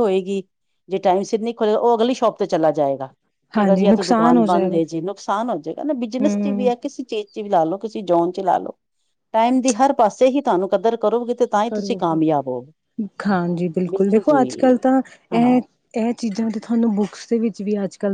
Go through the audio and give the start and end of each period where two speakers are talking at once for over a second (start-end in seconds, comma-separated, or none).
3.6-4.8